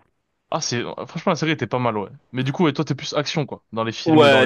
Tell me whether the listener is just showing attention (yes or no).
no